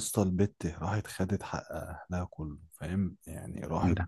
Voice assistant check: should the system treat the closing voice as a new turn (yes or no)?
no